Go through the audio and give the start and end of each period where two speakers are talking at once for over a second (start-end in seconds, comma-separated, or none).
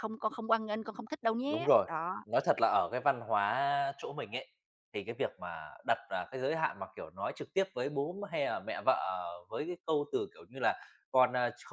none